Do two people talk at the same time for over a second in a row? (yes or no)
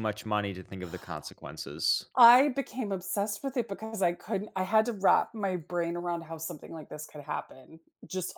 no